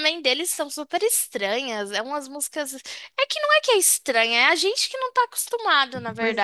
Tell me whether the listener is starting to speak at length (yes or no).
yes